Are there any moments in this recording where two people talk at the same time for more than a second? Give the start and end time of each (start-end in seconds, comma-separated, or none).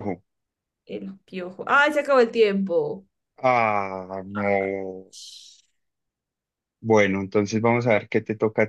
none